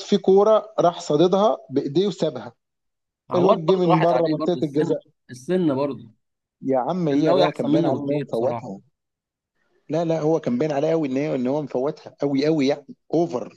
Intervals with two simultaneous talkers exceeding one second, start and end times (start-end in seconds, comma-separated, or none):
3.4-4.9, 7.1-8.7